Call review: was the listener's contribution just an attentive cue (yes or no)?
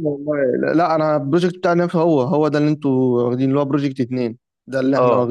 no